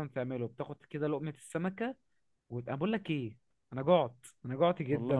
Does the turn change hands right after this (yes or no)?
no